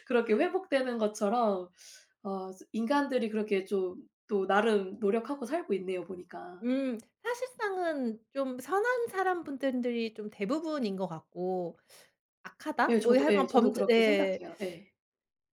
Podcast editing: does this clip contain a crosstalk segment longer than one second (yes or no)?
yes